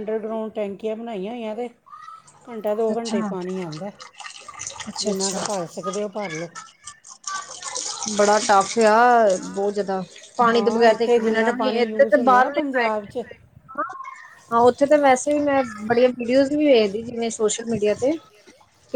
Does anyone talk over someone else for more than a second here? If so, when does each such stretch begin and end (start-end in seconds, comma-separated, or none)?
10.5-12.9